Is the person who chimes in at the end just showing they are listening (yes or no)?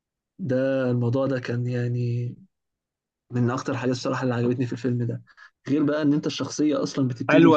no